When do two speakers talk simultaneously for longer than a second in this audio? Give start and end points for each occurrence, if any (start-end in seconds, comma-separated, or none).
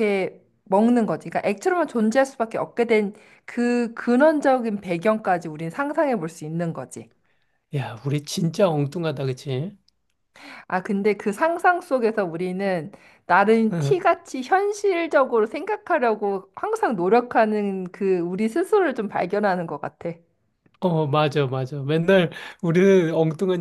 none